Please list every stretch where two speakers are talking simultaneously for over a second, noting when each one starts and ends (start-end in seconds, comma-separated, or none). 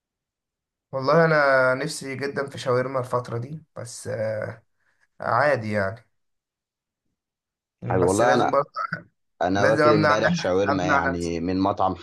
9.5-11.3